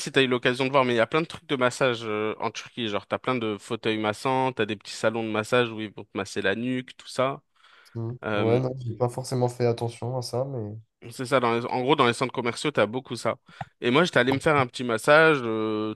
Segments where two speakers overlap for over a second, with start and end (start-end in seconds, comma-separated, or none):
none